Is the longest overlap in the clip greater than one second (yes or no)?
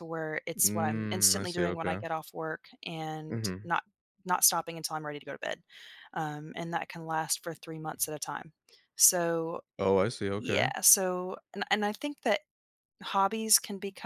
yes